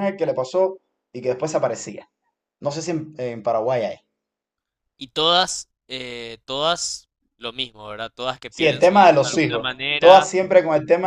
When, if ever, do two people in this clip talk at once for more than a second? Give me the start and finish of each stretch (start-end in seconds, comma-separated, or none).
8.5-10.3